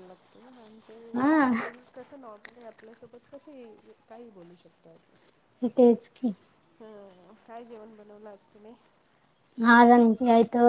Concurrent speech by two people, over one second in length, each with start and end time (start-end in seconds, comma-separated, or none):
none